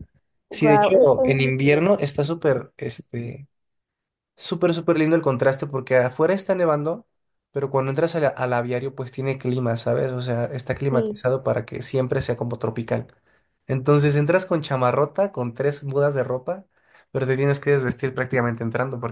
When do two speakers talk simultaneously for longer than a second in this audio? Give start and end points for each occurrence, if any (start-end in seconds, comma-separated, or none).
0.5-1.9